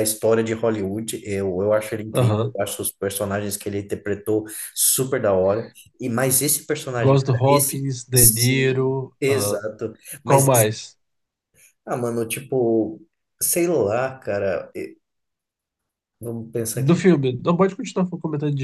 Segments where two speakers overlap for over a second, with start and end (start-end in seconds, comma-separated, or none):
7.0-9.6